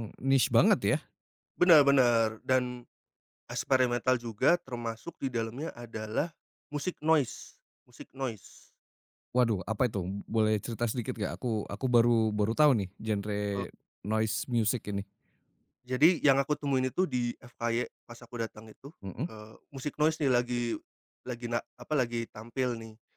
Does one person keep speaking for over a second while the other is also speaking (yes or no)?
no